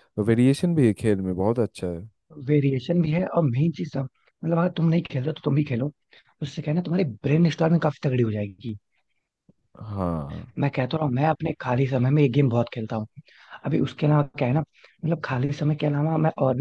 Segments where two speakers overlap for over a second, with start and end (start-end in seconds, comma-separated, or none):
none